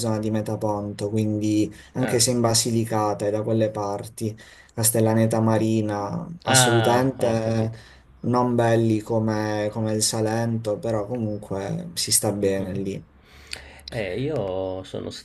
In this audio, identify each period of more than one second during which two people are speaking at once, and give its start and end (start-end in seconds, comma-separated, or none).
6.5-7.7